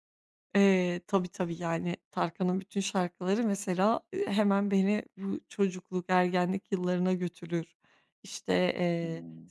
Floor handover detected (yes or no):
no